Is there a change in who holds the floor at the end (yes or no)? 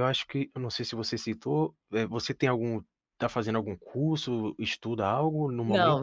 yes